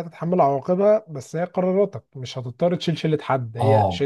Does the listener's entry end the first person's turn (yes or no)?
yes